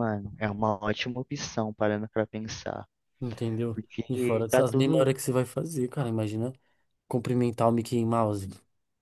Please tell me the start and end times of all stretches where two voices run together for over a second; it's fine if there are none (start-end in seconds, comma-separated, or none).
3.7-5.1